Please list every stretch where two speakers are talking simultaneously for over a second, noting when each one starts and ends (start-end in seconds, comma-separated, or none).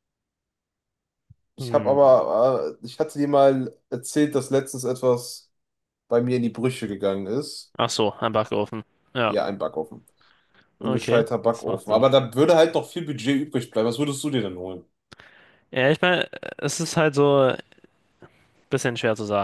10.8-12.0